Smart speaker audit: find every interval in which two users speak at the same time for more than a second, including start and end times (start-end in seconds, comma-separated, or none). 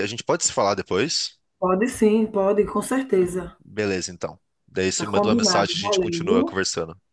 5.0-6.4